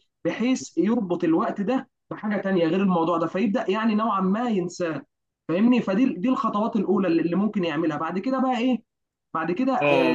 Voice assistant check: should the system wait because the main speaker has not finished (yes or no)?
no